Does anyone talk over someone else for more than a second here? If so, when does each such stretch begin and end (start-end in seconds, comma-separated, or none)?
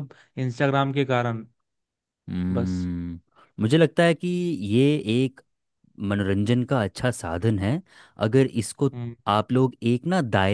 none